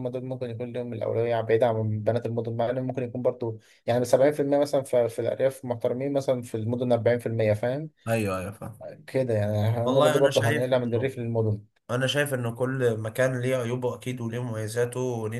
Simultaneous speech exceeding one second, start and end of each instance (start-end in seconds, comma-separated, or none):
9.8-11.1